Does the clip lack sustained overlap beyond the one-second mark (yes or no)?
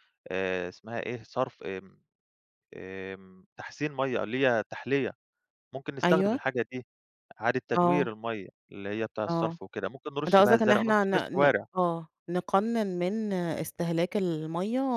no